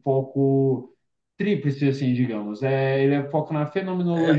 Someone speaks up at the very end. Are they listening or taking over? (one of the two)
taking over